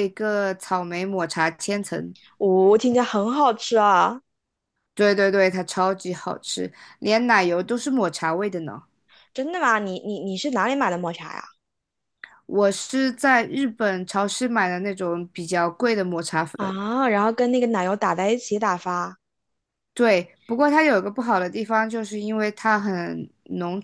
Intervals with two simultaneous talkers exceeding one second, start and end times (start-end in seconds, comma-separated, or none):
none